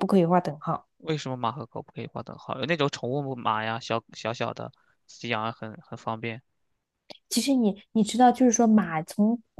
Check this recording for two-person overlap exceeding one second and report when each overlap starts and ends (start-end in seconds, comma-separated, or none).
none